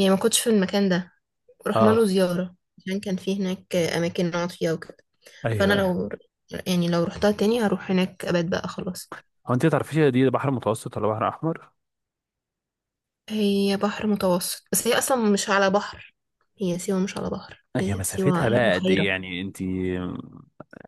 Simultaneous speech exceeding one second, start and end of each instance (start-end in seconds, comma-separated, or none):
17.8-19.1